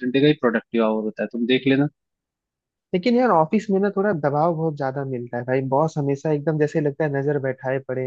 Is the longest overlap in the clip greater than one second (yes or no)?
no